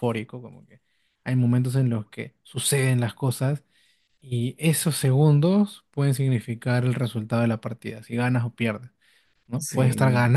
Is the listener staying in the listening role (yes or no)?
yes